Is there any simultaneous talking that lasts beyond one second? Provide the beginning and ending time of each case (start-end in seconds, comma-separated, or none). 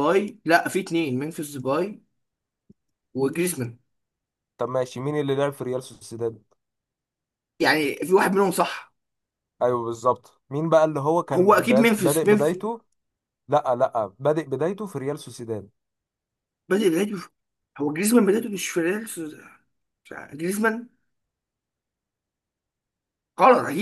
11.3-12.6